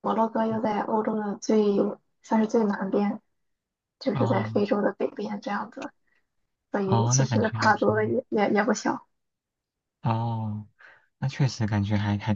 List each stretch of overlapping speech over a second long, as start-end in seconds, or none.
6.8-8.2